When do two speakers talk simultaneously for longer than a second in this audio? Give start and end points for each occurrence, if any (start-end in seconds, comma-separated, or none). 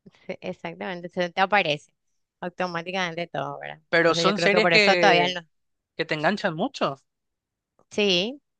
3.9-5.3